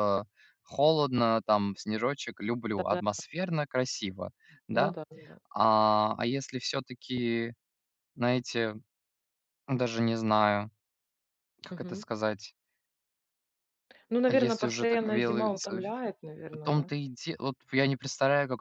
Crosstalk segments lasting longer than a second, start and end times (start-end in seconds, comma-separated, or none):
14.3-15.5